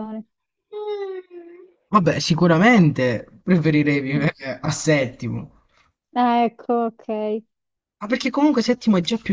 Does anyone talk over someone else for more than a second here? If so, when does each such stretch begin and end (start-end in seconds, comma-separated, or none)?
none